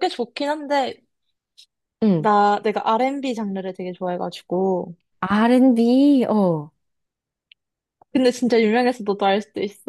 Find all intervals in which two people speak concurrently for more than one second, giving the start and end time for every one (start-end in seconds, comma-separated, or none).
none